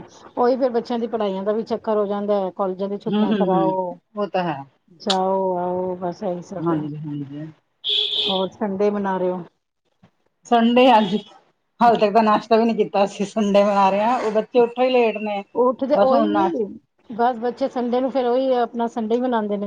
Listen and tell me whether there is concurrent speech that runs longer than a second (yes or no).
no